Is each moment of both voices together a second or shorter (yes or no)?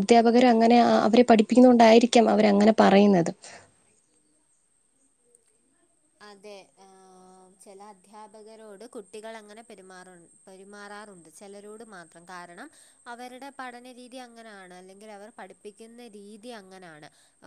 yes